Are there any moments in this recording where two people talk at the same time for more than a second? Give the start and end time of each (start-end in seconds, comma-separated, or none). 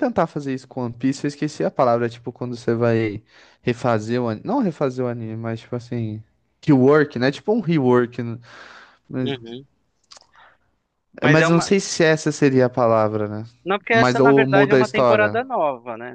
13.9-15.4